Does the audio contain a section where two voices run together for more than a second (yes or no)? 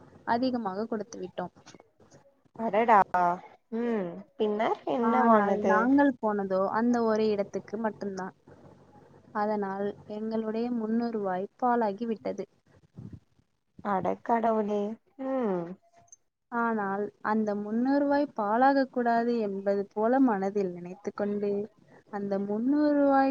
no